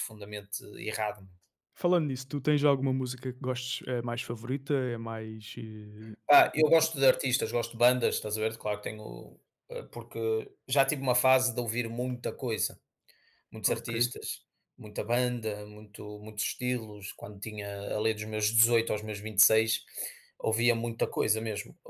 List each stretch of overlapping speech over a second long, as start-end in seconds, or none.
none